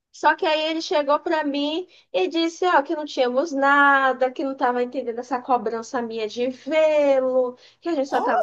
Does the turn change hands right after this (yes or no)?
no